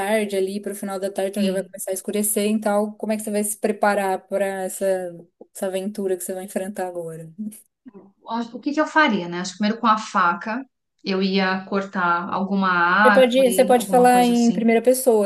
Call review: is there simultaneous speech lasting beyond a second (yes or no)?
yes